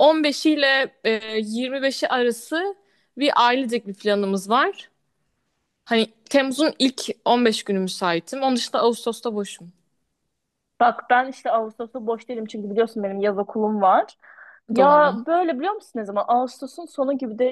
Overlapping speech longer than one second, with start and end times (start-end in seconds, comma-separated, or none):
none